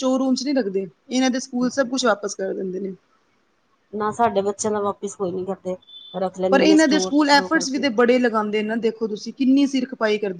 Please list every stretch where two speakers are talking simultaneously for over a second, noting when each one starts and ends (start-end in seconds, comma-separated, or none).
6.5-7.8